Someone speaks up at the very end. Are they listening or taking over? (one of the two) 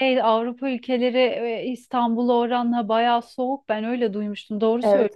taking over